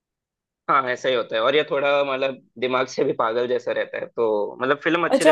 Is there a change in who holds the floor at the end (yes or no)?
yes